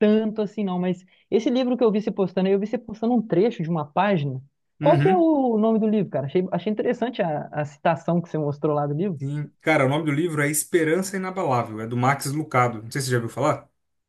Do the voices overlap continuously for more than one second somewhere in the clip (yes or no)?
no